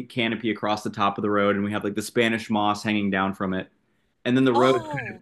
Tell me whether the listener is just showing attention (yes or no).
yes